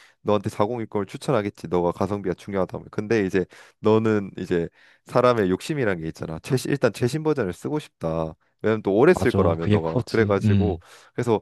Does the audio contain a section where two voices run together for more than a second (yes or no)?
yes